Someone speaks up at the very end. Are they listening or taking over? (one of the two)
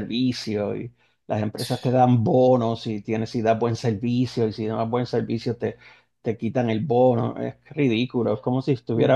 listening